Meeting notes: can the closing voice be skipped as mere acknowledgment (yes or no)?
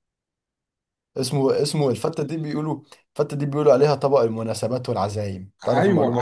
no